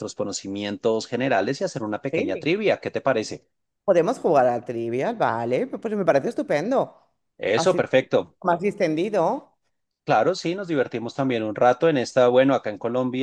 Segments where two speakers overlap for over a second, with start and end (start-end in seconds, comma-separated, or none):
none